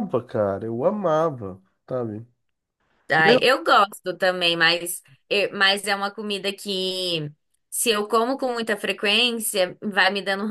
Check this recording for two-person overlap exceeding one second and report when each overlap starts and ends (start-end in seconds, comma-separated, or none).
none